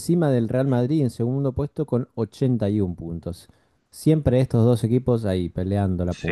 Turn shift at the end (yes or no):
yes